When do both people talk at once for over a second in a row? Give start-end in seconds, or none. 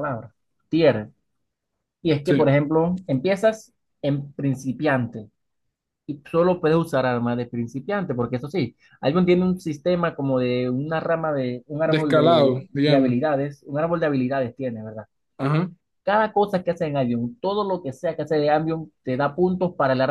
11.8-13.2